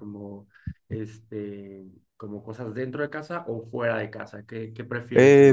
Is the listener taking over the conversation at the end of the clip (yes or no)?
yes